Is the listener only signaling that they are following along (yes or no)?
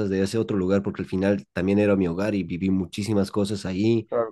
yes